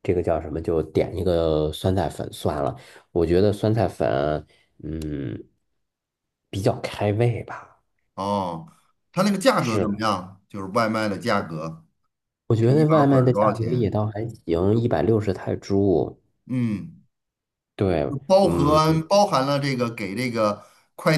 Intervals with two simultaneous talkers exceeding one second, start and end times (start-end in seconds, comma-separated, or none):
12.6-14.0